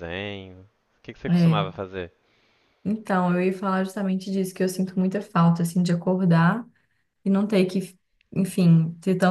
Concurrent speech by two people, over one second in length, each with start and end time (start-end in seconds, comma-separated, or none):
none